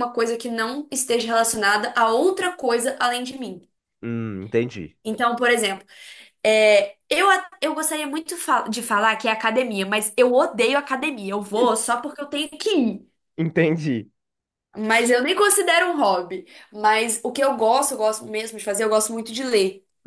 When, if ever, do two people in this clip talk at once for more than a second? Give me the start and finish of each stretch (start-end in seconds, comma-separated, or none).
none